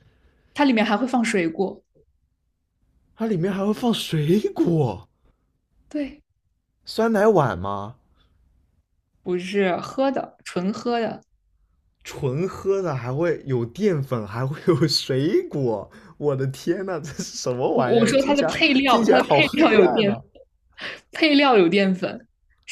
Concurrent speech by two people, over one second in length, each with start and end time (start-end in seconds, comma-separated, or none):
17.7-20.2